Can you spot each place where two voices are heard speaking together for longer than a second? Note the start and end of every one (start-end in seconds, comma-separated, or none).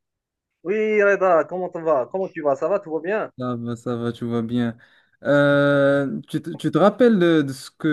none